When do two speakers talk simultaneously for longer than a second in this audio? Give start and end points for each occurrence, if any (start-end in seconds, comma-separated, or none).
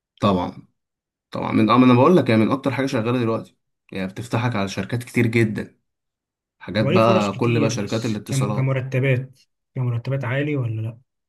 6.8-8.8